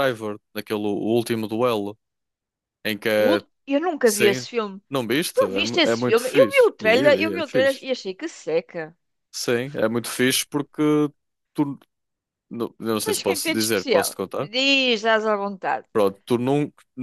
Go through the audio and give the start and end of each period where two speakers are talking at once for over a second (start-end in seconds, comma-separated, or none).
5.3-7.9, 13.0-14.5